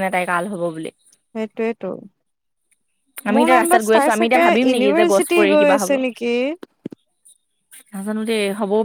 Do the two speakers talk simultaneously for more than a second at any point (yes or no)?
yes